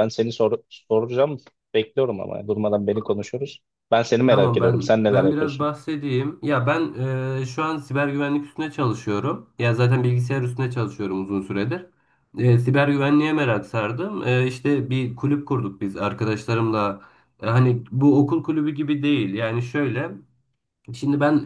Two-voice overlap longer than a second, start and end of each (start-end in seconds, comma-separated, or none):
4.3-5.7